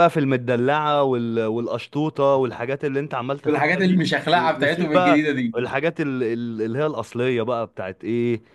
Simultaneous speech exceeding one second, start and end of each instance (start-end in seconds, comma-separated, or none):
3.5-5.2